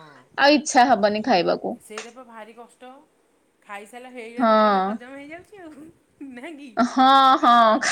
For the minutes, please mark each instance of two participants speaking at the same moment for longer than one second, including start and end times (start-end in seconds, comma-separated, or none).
none